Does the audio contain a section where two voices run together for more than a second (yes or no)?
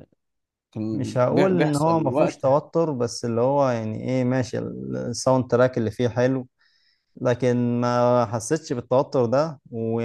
yes